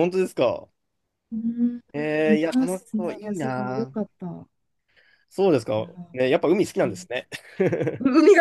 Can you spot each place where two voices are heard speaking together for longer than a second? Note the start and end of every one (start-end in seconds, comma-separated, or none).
1.9-3.9